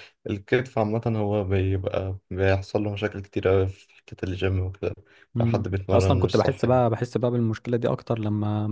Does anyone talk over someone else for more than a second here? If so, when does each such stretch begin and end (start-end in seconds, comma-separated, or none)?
5.4-6.8